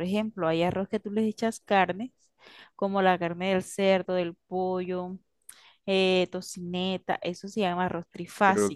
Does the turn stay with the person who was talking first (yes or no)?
no